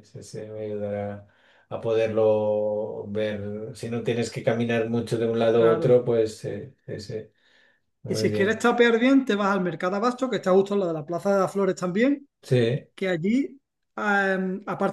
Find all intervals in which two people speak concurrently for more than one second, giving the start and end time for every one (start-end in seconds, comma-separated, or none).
none